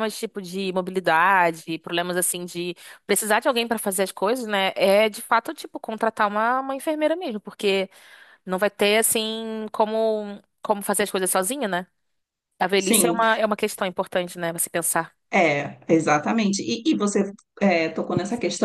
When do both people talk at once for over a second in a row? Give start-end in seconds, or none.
none